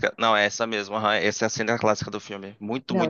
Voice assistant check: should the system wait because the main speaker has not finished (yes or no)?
yes